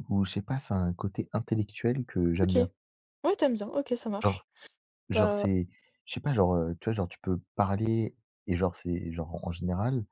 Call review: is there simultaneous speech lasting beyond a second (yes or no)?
no